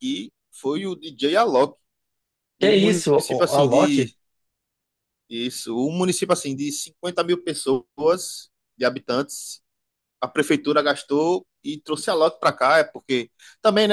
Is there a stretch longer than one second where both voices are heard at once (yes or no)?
yes